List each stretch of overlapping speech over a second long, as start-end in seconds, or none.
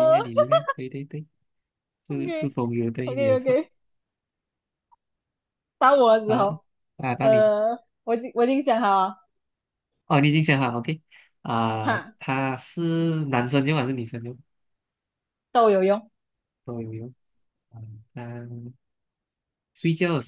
2.1-3.6